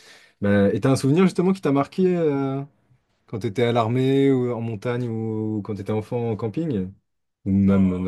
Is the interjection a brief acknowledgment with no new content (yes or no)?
no